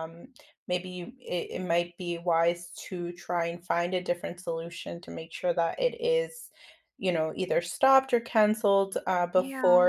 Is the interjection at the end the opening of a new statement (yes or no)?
no